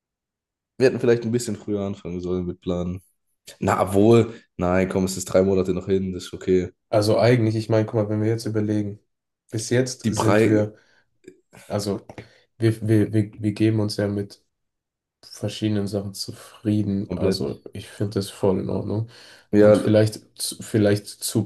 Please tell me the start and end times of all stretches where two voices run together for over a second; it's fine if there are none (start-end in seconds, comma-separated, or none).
none